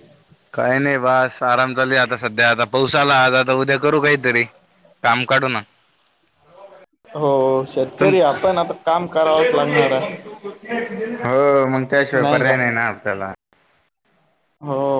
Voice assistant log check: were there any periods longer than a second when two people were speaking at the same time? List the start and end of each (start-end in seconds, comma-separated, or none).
none